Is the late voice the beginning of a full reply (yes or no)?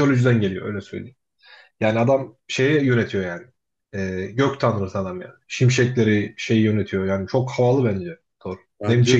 no